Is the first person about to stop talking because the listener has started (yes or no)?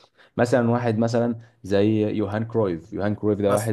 no